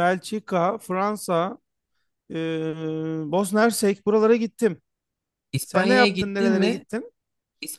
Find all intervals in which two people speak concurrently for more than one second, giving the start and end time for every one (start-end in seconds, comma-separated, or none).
5.6-6.8